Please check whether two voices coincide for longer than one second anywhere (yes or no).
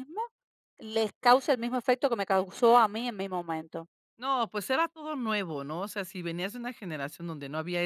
no